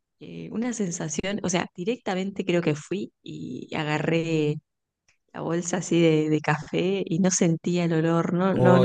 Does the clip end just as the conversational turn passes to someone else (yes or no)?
yes